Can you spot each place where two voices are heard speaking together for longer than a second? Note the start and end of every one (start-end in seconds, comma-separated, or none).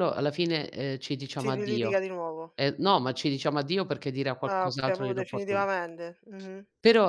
4.4-5.7